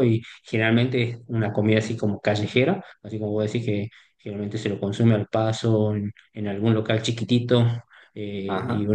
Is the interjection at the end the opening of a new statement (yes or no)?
no